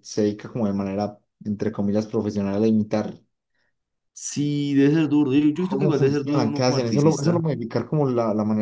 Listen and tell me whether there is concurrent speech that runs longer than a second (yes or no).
yes